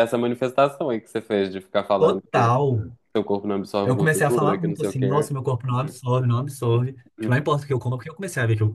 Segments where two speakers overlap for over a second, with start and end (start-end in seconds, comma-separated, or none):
3.8-5.3